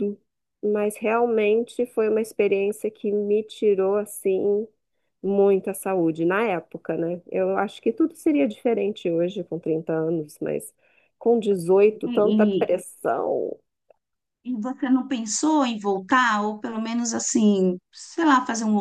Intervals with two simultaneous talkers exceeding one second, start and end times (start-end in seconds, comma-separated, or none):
none